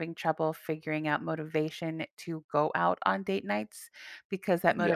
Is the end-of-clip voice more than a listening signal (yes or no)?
no